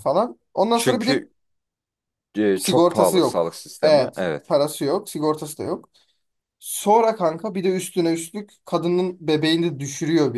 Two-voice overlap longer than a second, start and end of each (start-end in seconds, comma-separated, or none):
2.6-4.6